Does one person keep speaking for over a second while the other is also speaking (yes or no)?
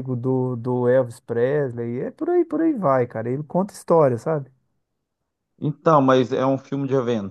no